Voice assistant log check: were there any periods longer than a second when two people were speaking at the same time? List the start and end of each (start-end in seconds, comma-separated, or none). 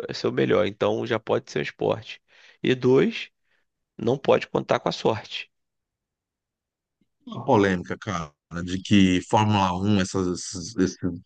none